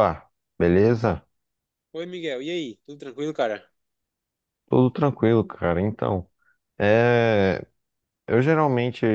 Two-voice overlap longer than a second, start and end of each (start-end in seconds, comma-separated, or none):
none